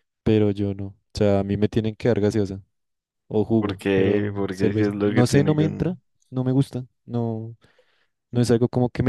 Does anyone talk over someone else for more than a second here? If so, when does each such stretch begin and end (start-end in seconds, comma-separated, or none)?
3.6-5.9